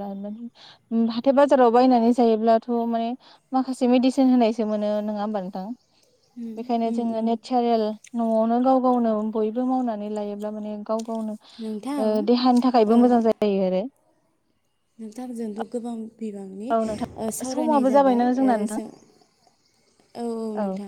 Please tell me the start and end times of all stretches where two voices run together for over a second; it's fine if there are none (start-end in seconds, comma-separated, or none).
16.8-18.8